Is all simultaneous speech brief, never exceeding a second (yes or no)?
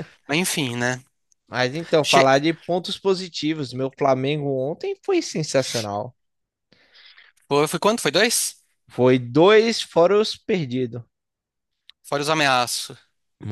yes